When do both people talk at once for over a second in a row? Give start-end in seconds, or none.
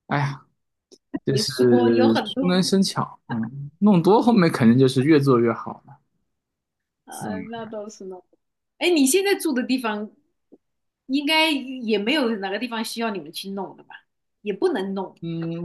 1.3-2.6